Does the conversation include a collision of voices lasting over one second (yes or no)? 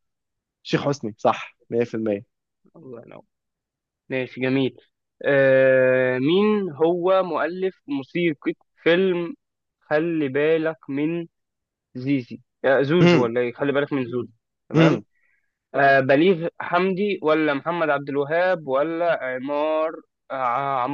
no